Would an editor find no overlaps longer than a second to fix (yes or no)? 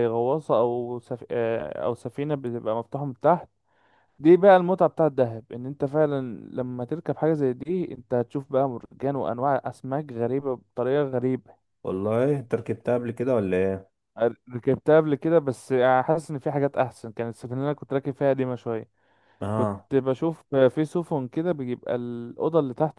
yes